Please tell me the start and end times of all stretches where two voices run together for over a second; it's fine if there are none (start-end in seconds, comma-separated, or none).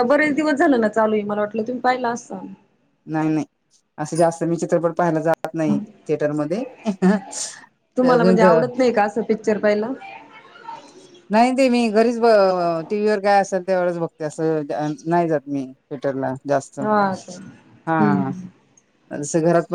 none